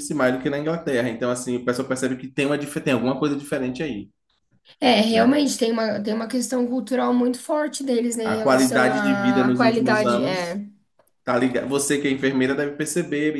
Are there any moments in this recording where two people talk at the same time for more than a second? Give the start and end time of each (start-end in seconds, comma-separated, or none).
8.2-10.6